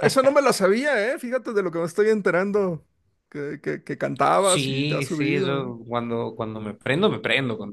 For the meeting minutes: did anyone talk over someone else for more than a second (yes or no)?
yes